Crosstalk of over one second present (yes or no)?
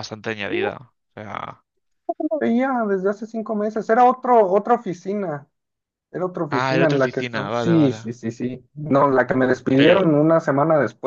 yes